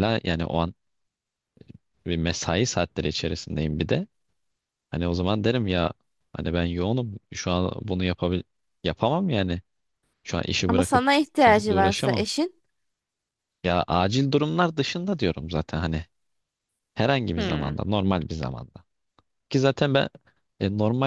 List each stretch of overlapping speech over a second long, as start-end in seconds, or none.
10.7-12.2